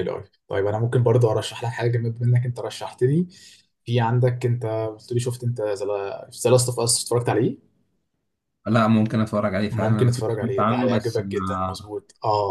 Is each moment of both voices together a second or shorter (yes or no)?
no